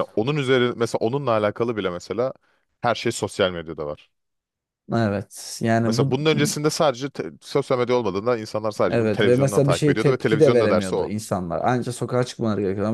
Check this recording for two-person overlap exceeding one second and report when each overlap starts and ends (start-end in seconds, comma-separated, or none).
8.9-11.1